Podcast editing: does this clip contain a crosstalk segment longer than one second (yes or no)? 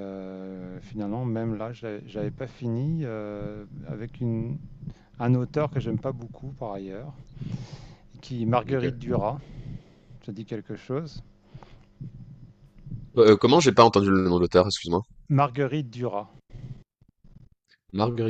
no